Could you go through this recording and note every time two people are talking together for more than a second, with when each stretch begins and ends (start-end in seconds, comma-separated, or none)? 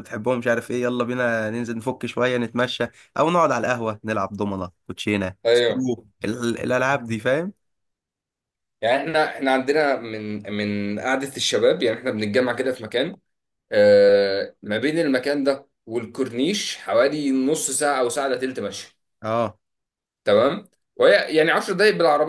none